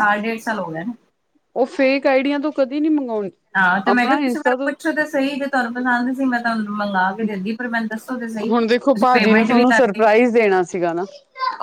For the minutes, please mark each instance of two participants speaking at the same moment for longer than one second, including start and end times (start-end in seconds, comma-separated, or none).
8.5-10.1